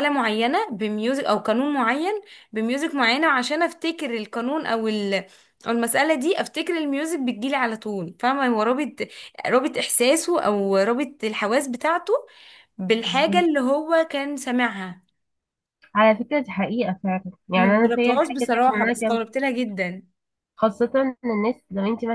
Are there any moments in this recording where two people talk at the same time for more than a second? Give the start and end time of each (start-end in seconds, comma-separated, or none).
17.5-19.2